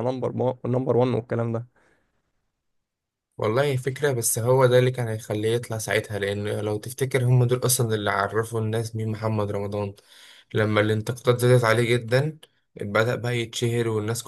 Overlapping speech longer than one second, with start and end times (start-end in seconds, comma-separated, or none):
none